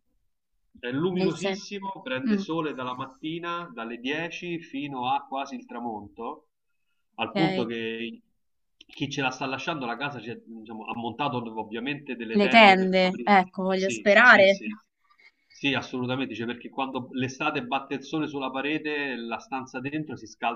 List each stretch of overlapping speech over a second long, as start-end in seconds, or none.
12.4-14.6